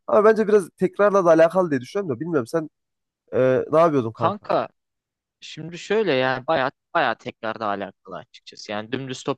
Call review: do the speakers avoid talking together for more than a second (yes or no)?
yes